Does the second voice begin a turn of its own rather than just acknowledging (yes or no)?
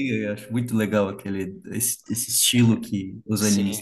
yes